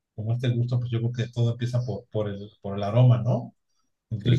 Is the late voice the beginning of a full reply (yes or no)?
no